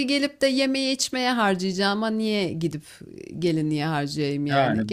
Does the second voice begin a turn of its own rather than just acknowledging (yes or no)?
yes